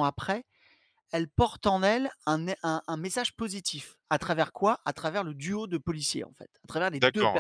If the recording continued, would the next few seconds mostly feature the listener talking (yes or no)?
yes